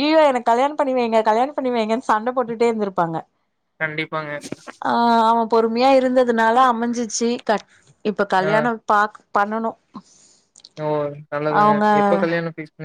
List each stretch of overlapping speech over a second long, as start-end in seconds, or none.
none